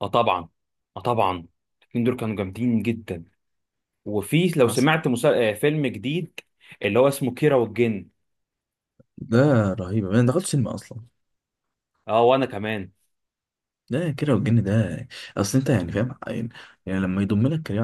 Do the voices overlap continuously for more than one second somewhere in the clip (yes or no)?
no